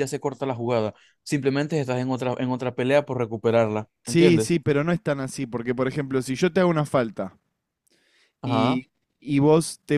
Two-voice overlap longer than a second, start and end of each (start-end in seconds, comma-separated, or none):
none